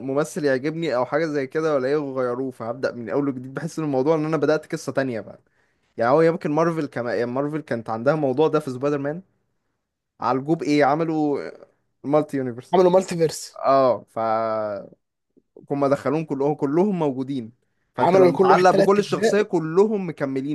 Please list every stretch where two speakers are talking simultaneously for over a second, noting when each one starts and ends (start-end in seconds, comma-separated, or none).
18.0-19.4